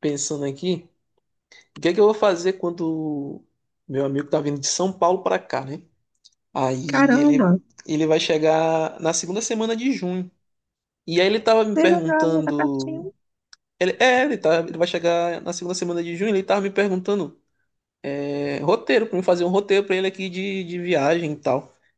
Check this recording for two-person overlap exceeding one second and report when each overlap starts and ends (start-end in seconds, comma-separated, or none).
11.7-13.1